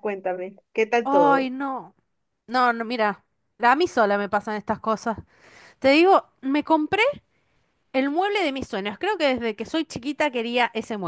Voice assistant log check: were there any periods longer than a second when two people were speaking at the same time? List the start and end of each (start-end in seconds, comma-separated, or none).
none